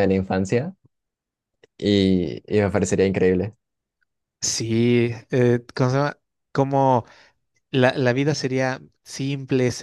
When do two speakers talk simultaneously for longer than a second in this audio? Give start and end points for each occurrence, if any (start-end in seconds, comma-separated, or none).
none